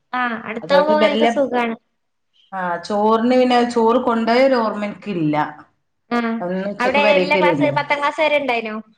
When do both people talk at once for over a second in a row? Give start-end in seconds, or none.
none